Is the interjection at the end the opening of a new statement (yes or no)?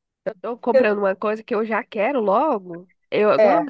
no